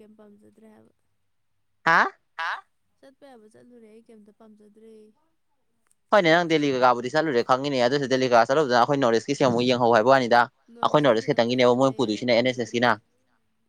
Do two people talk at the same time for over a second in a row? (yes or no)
yes